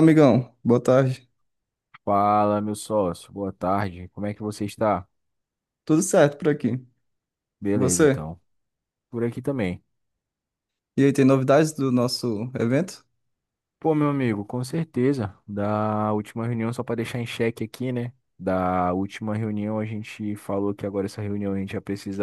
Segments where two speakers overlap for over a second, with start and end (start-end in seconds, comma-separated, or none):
none